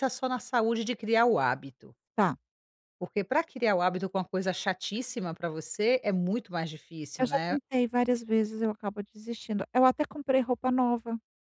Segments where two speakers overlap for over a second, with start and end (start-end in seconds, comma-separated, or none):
none